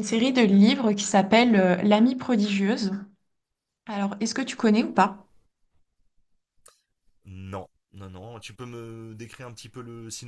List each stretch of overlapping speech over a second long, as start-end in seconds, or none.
none